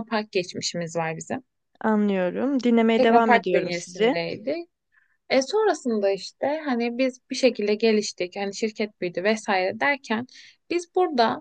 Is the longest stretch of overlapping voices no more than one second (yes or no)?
no